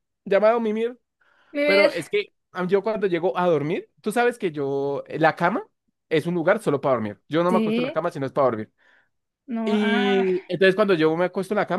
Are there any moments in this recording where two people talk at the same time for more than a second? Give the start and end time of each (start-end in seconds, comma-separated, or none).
none